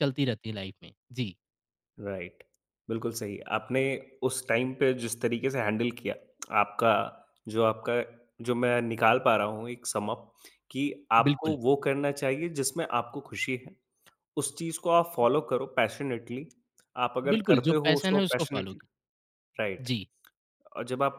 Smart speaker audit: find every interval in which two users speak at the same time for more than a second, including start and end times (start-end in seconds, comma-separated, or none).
17.3-18.8